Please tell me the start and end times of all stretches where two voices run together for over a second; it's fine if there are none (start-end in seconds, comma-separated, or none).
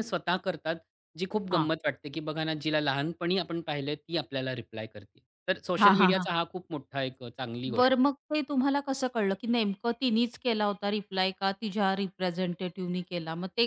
none